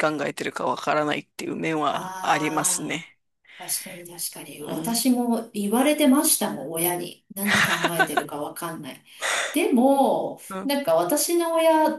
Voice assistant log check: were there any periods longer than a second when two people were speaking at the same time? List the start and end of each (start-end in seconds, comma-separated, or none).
1.8-3.1